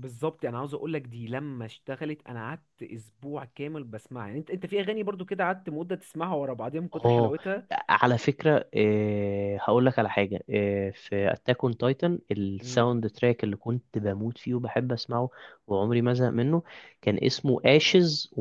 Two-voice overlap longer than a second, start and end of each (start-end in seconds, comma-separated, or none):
none